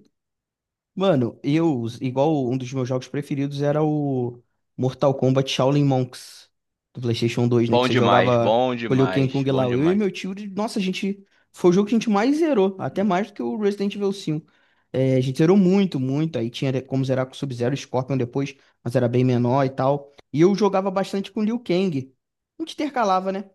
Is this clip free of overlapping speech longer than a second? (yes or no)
no